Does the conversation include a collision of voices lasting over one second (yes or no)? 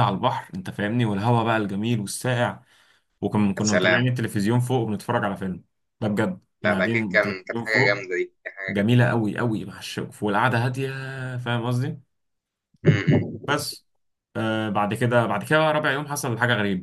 yes